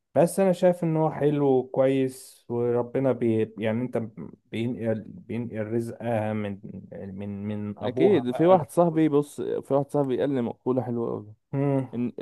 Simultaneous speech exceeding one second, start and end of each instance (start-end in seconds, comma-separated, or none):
7.8-9.0